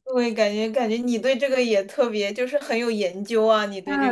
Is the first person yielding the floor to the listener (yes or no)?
yes